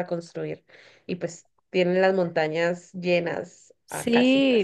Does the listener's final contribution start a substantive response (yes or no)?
yes